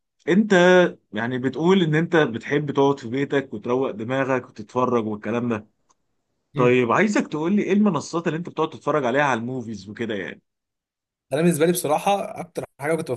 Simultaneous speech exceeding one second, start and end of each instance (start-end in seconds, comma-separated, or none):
none